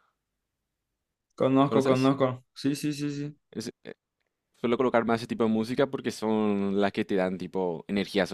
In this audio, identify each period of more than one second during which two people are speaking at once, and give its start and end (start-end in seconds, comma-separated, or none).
none